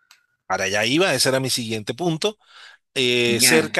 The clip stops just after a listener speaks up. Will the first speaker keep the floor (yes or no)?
yes